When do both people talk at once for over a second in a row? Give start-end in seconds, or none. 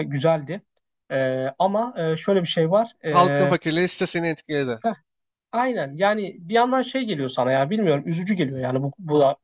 none